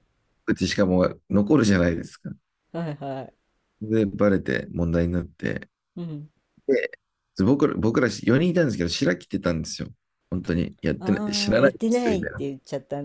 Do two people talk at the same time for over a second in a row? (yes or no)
yes